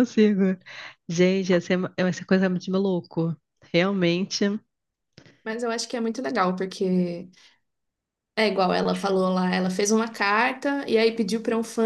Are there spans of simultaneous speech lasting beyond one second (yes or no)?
no